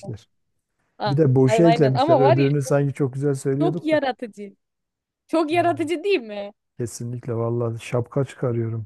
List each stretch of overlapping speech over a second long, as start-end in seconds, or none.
1.1-2.5